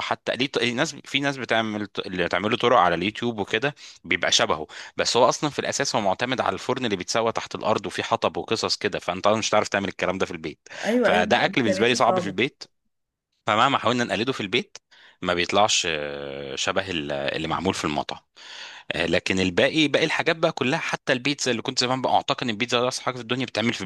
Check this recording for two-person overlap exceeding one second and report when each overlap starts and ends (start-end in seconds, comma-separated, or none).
10.8-12.3